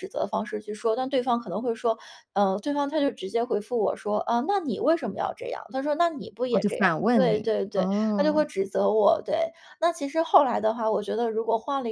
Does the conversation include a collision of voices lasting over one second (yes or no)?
yes